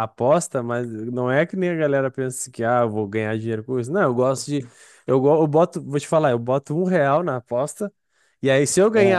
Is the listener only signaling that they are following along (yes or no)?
yes